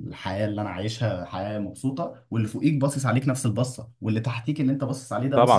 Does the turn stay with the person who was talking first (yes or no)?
no